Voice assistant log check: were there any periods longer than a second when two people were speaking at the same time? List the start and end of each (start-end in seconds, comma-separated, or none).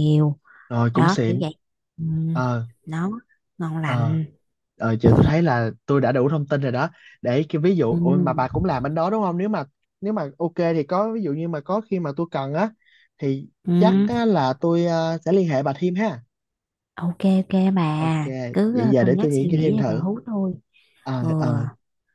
18.7-20.1